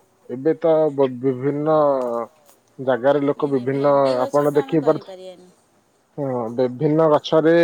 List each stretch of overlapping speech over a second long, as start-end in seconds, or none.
3.4-5.2